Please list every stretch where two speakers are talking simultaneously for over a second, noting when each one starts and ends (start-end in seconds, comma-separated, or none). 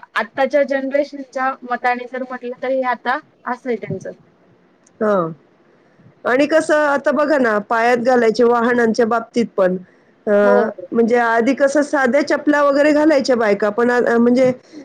none